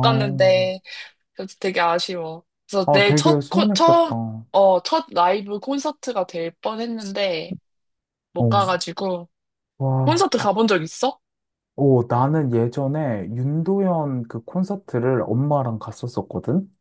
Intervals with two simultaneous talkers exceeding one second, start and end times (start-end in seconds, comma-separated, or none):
2.9-4.1